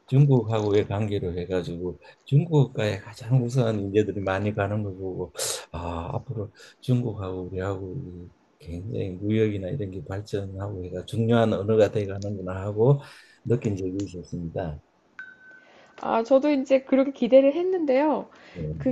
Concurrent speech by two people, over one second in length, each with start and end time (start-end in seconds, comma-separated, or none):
none